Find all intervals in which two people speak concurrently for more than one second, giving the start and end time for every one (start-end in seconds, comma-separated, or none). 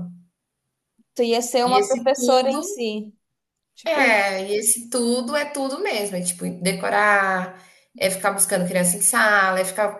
1.6-2.9